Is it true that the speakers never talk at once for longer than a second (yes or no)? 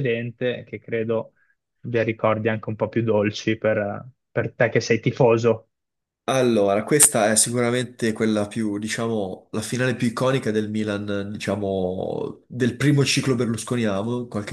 yes